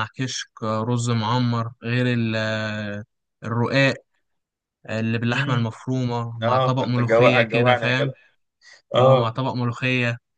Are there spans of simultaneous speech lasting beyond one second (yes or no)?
yes